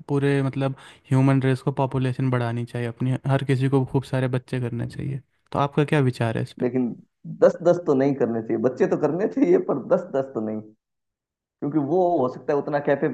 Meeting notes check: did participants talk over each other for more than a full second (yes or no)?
no